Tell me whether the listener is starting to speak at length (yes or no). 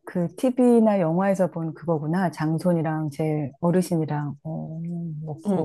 yes